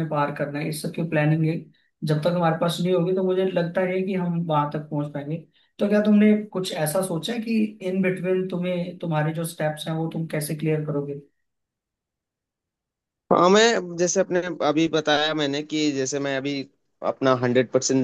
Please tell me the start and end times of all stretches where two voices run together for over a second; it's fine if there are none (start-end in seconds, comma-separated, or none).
none